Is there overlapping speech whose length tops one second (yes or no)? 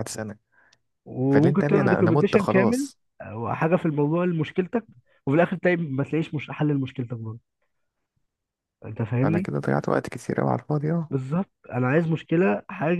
yes